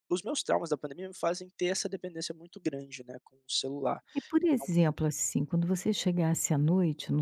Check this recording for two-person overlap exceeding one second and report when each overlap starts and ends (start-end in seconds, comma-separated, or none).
none